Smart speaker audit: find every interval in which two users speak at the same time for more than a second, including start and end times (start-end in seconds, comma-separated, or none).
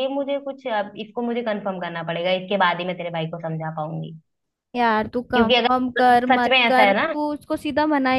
5.3-7.1